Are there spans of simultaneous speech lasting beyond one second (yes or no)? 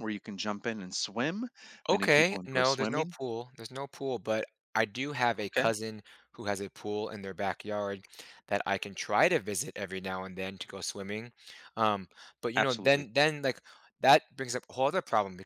yes